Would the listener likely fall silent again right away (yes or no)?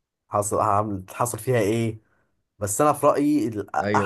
no